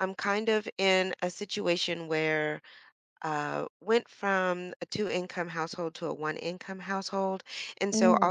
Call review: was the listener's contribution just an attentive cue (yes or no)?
yes